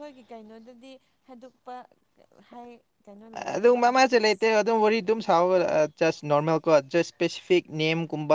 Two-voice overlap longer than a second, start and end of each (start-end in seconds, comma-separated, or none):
3.5-5.6